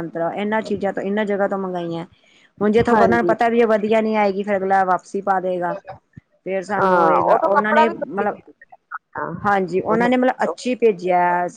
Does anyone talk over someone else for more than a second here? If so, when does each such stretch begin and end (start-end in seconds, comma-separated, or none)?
6.8-8.3